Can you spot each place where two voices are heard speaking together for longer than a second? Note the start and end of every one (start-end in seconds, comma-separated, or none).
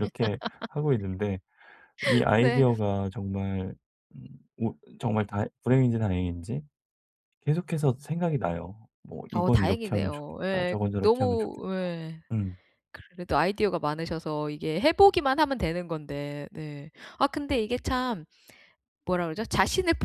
9.3-11.9